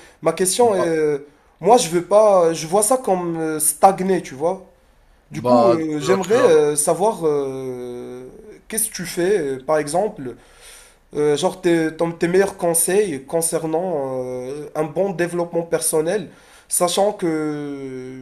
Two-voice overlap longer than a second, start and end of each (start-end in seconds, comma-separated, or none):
5.3-6.7